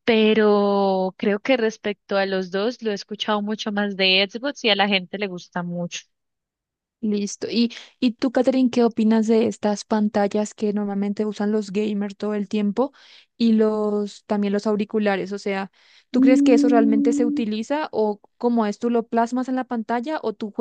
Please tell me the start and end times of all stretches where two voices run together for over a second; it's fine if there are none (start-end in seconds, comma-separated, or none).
16.1-17.5